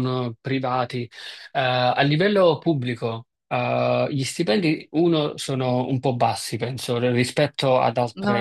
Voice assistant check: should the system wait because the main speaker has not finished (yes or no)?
yes